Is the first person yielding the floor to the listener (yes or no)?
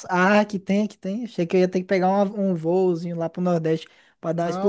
yes